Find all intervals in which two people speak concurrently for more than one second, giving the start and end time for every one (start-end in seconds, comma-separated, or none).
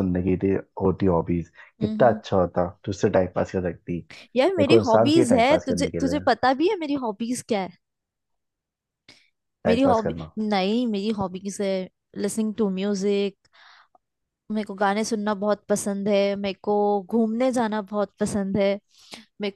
4.6-6.2